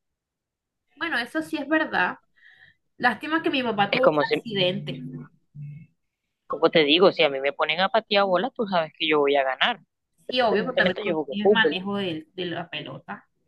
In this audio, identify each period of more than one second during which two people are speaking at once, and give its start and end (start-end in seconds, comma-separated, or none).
10.3-11.8